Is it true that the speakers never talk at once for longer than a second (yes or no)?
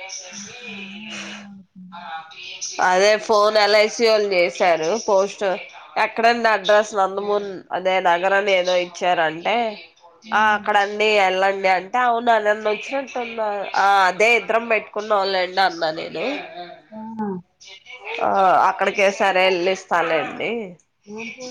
yes